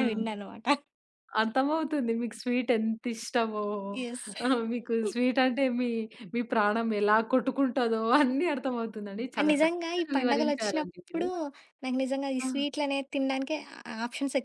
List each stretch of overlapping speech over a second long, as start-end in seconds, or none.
9.4-11.2